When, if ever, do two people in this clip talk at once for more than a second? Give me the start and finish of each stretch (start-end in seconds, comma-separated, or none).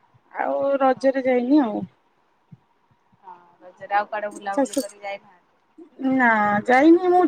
none